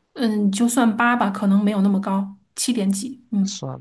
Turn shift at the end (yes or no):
yes